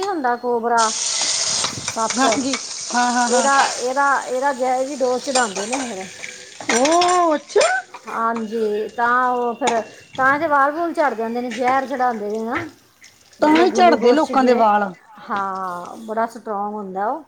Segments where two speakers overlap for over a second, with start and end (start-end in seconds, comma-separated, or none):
13.4-14.6